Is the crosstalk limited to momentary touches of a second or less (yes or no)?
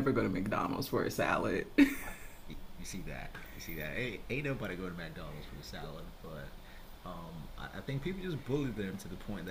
yes